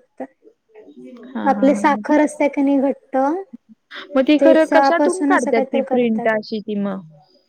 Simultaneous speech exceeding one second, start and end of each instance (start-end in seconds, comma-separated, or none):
4.4-6.3